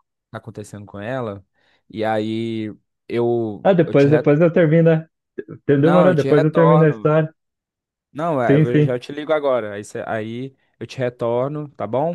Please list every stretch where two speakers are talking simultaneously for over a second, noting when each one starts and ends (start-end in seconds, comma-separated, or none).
5.8-7.2